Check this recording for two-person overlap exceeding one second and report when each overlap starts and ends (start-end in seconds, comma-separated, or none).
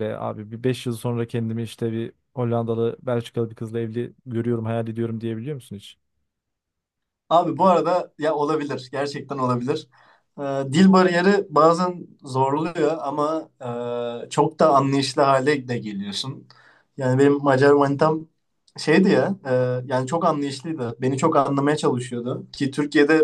none